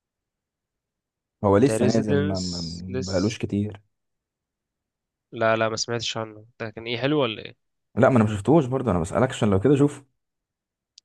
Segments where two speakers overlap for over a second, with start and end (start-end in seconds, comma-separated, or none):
1.6-3.4